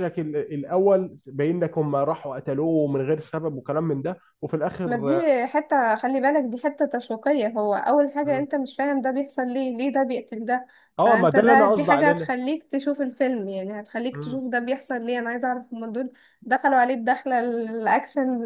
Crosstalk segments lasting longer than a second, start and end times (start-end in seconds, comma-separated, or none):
11.0-12.3